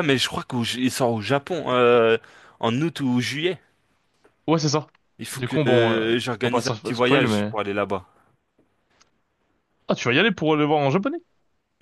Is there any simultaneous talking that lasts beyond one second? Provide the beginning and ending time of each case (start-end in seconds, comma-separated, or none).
5.3-7.5